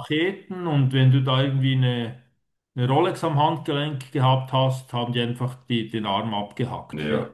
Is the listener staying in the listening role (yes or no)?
no